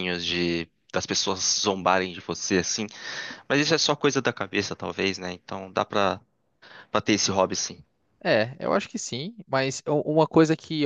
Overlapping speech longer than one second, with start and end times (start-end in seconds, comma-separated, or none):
none